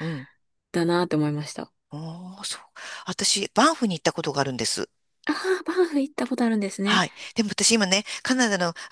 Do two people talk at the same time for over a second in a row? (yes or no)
no